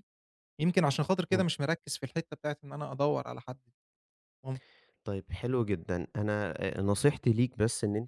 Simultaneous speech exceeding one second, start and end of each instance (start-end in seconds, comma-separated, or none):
none